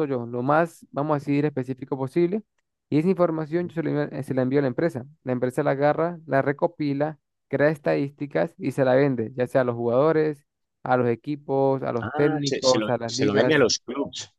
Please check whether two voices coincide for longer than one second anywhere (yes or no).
yes